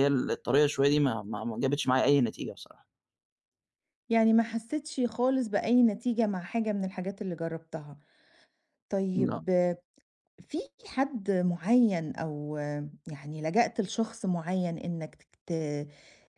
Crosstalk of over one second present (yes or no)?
no